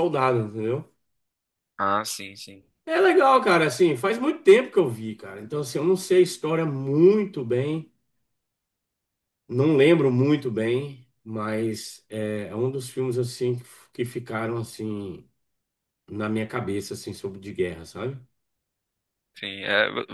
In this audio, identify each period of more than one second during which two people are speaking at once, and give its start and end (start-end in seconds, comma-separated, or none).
none